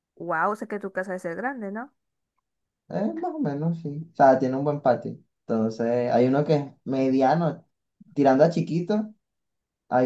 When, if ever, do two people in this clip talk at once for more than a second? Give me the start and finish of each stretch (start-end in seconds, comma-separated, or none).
none